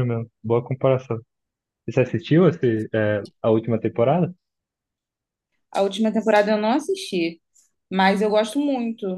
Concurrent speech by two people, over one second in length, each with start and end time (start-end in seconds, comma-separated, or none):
none